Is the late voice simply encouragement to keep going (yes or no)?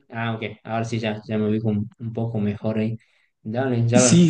yes